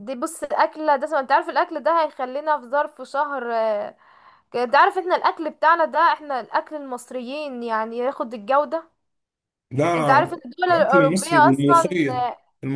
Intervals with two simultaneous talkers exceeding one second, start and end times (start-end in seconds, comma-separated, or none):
10.2-12.3